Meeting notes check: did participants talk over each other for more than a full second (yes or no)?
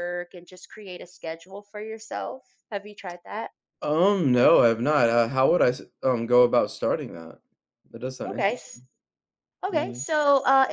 no